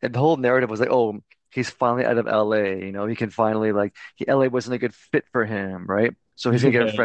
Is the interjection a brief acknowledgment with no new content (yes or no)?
yes